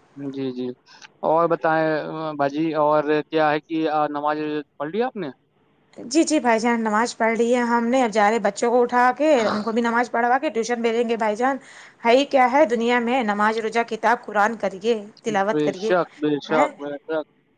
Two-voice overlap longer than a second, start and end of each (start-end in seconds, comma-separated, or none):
none